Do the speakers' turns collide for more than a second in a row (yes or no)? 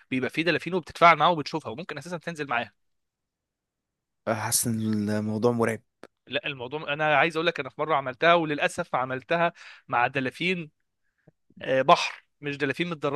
no